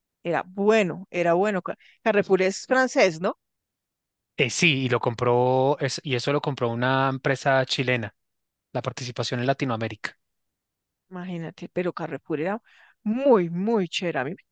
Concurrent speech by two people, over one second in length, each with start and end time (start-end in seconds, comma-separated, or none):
none